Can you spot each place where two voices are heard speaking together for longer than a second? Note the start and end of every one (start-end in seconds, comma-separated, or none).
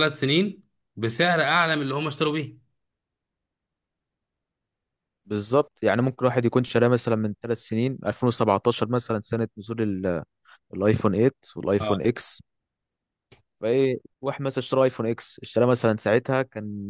none